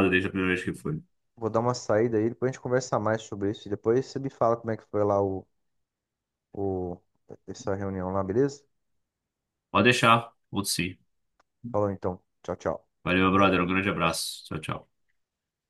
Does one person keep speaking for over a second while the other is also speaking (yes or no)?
no